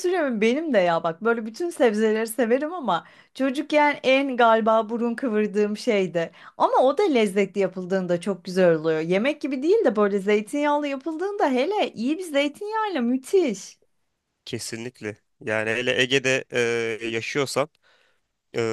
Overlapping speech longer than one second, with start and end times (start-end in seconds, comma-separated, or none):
none